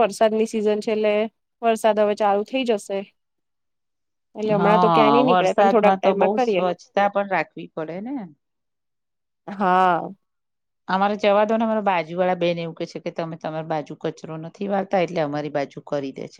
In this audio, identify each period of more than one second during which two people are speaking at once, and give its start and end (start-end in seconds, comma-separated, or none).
4.6-6.7